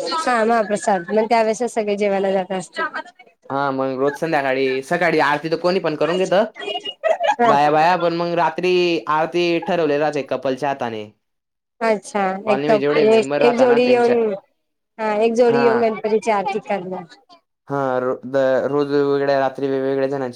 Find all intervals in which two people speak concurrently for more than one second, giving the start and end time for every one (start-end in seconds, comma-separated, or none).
12.4-14.2